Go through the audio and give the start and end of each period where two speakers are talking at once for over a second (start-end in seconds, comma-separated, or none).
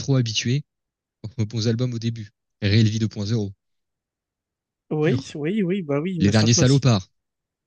none